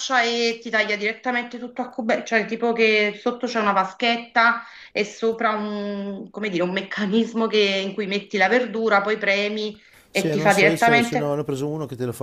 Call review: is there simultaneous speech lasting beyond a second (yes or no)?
yes